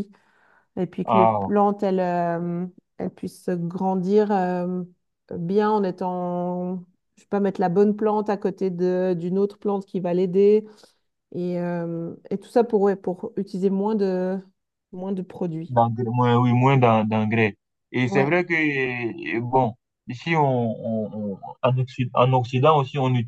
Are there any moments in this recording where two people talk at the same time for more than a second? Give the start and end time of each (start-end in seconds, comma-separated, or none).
none